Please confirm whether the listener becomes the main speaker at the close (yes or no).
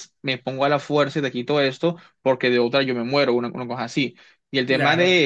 no